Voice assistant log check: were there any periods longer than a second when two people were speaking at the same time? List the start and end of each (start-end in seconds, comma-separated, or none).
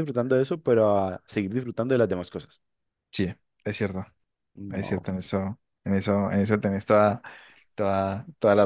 none